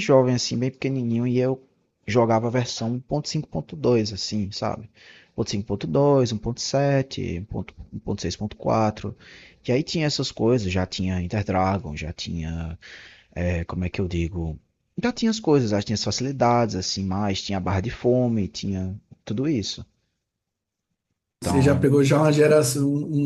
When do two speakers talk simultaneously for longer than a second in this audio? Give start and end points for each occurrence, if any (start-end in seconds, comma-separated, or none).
none